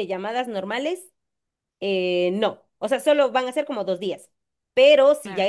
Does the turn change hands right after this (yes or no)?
no